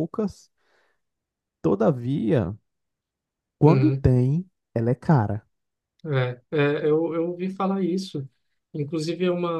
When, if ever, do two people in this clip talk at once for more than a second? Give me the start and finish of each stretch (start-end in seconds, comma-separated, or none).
none